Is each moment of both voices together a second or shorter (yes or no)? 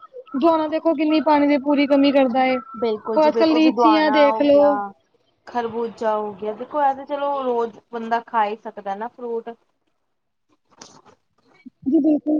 no